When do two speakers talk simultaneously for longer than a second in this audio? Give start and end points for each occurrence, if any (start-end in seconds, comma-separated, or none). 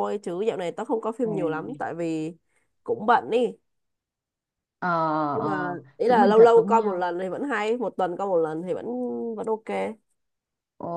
5.4-7.1